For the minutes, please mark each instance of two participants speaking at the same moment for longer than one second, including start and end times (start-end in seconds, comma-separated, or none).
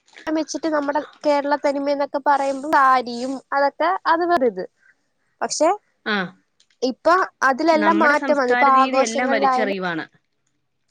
7.8-9.8